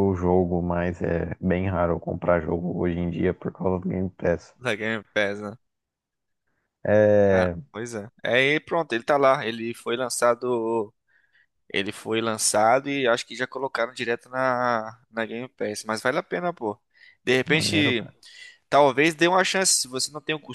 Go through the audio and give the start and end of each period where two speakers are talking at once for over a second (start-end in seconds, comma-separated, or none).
none